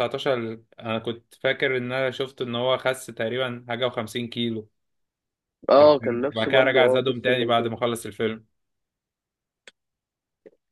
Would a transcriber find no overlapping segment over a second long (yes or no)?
no